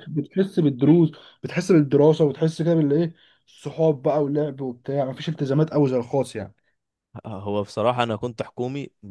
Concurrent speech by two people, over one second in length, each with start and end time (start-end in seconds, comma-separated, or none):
none